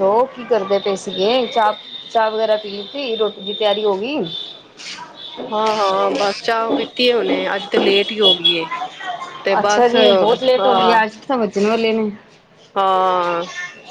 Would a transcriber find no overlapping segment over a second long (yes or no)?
no